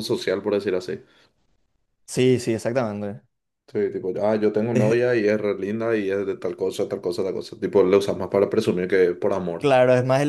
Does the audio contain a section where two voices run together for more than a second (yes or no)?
no